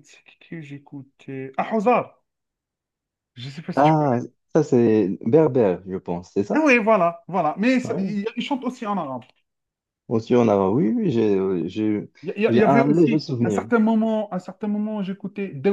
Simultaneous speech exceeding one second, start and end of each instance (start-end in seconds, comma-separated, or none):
12.5-13.7